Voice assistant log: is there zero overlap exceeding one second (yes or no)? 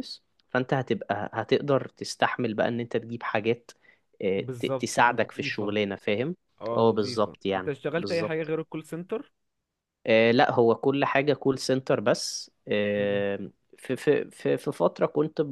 no